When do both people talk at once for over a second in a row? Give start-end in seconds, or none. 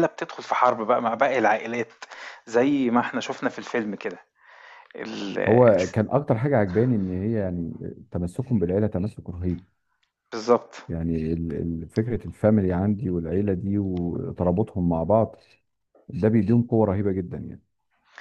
none